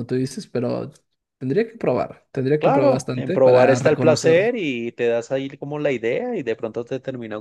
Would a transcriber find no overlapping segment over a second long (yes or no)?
no